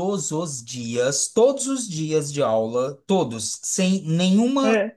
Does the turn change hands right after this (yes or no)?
no